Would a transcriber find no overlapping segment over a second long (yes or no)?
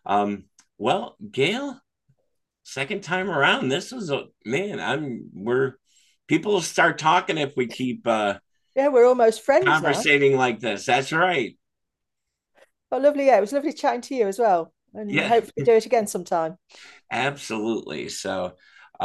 yes